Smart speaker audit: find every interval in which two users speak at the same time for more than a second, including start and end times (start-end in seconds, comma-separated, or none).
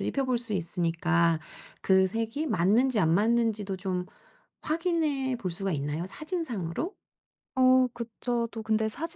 none